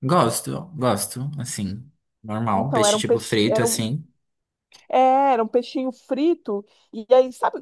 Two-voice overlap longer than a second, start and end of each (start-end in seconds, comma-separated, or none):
2.5-3.9